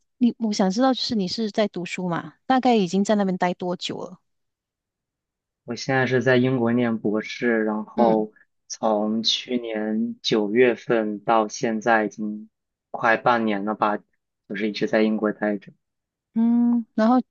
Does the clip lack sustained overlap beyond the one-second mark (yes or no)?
yes